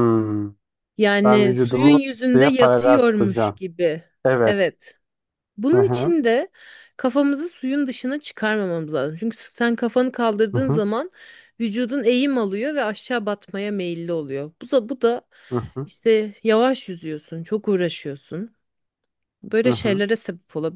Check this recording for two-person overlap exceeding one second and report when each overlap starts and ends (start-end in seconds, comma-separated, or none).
1.2-3.6